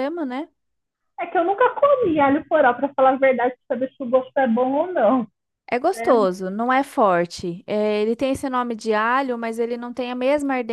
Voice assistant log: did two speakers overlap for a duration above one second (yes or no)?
no